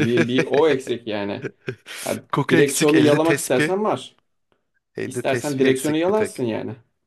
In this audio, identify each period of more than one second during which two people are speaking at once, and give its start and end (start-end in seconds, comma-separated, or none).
2.3-3.7, 5.0-6.4